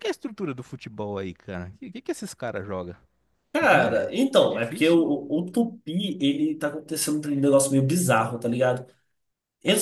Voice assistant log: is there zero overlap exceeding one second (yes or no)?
no